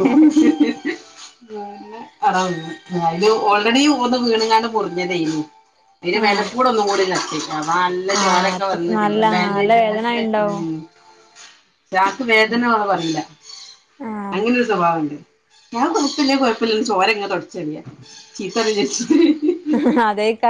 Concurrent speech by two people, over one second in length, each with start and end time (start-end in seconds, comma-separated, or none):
8.2-10.6